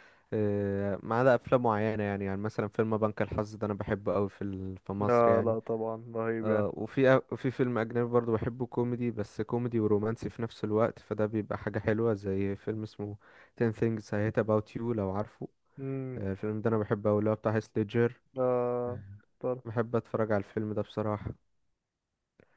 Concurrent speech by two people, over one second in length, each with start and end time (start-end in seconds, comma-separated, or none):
none